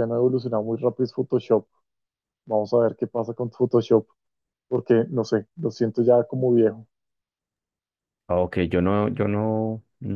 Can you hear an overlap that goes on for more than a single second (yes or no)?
no